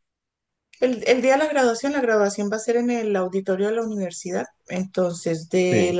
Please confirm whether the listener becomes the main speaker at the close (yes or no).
no